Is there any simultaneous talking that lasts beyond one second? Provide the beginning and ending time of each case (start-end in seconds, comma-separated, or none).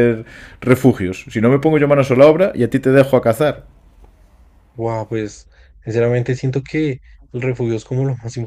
none